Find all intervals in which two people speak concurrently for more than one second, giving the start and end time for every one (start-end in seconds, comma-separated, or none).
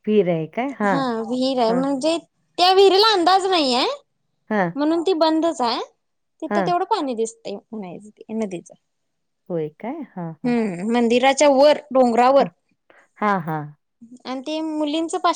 none